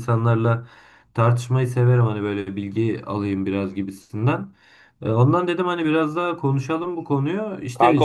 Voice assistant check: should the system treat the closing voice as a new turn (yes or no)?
no